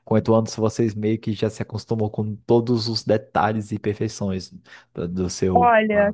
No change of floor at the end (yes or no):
no